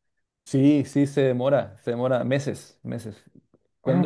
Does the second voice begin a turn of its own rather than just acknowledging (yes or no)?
yes